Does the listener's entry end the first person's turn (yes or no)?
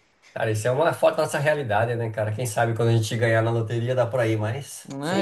yes